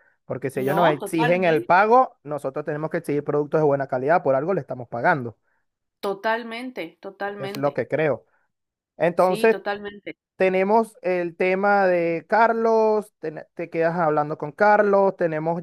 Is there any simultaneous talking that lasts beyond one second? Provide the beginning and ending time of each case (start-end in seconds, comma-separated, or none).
0.5-1.9